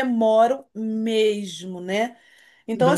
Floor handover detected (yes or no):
no